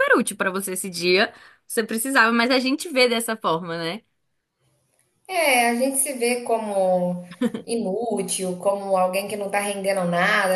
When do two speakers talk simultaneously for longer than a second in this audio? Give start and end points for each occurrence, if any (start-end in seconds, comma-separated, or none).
none